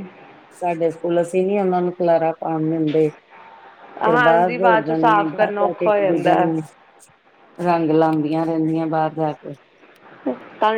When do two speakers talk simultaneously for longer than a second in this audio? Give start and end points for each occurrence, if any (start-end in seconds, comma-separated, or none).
4.0-6.5